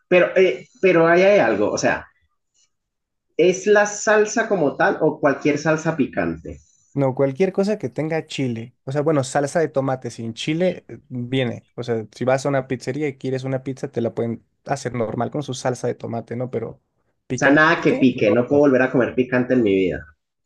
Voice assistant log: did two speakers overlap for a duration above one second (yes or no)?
yes